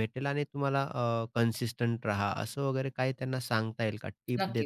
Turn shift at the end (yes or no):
yes